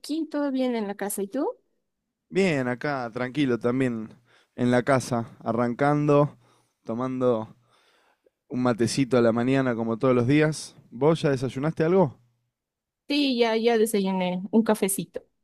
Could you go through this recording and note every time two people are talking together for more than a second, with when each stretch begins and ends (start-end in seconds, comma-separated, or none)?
none